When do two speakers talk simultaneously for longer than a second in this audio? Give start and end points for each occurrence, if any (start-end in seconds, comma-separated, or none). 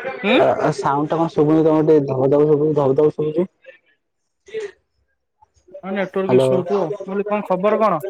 none